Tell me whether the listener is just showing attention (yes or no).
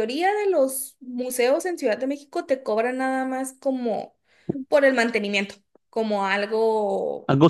yes